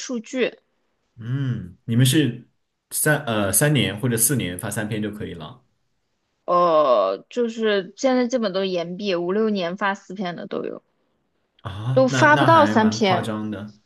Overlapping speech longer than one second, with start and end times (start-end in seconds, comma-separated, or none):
11.9-13.3